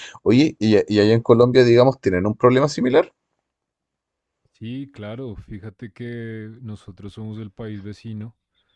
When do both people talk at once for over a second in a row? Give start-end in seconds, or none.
none